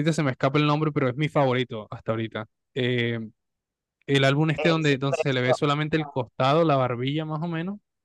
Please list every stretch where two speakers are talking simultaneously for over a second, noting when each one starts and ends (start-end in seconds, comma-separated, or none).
4.6-6.2